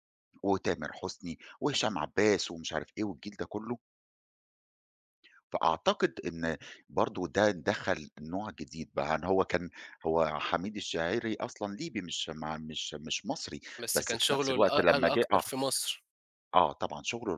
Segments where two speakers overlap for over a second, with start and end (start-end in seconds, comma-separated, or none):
13.8-15.4